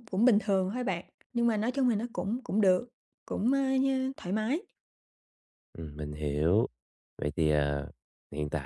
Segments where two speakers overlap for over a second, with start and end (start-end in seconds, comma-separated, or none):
none